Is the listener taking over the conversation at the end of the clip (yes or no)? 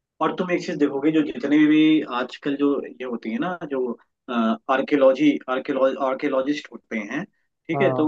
no